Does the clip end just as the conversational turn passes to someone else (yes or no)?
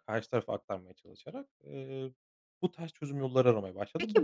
yes